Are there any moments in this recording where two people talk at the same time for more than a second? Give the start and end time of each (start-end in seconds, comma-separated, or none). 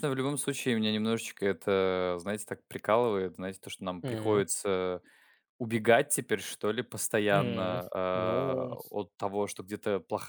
7.3-8.8